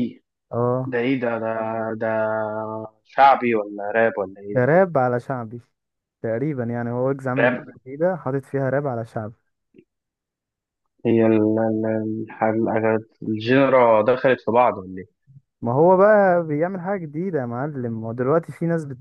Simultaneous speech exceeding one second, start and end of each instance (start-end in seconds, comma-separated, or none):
none